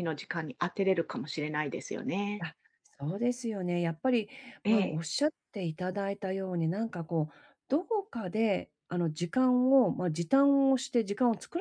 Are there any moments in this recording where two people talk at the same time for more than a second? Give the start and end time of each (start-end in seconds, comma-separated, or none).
none